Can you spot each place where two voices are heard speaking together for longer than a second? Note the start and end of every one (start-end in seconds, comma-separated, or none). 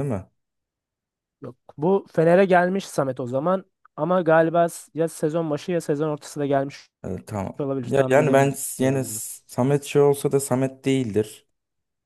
7.6-9.2